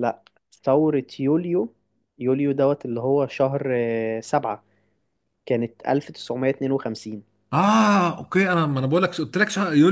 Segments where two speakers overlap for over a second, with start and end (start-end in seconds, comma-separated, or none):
none